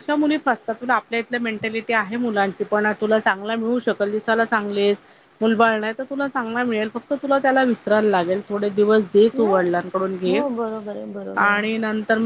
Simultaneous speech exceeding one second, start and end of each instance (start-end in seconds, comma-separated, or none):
none